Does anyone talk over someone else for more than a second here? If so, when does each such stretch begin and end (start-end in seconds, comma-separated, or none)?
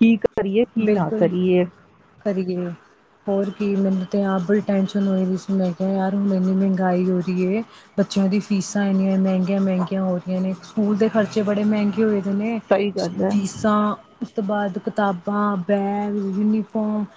none